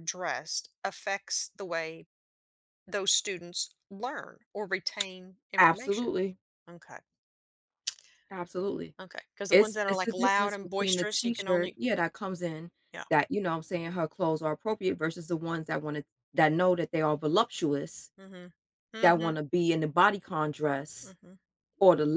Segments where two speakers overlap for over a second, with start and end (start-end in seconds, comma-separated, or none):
9.5-11.8